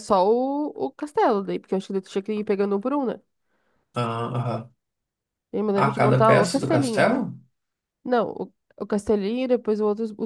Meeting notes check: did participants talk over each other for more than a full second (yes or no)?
yes